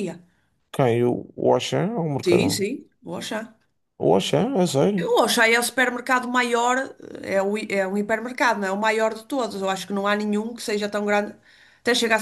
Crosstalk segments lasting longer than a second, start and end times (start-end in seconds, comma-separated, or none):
none